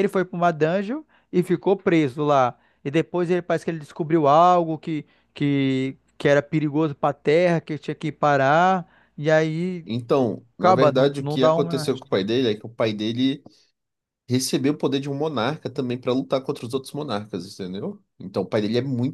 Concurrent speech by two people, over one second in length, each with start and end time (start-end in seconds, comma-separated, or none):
10.6-11.9